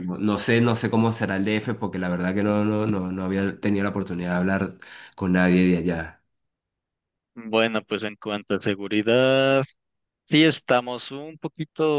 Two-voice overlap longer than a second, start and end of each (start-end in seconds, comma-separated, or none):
none